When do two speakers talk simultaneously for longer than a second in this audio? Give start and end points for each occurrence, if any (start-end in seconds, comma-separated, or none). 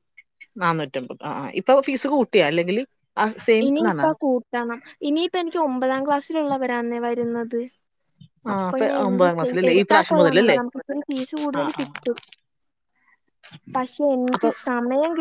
8.5-10.6